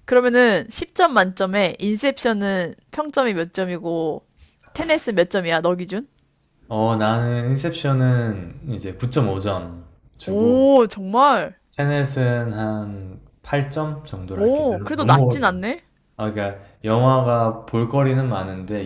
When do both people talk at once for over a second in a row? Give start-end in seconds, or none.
14.4-15.7